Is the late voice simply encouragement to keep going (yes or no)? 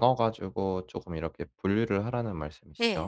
no